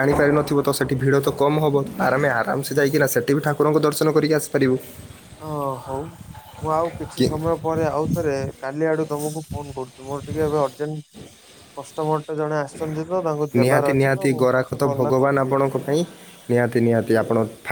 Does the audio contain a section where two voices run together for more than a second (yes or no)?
yes